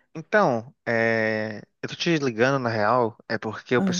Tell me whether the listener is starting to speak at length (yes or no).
no